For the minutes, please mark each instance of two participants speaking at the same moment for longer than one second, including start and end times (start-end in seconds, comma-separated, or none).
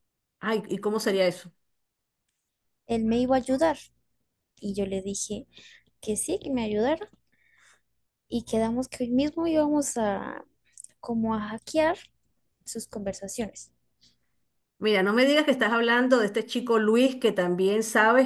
none